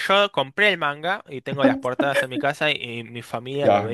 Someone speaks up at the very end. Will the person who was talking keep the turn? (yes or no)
no